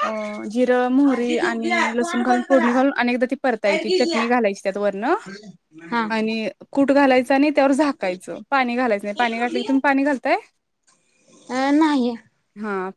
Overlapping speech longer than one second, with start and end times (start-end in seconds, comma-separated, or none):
1.1-2.7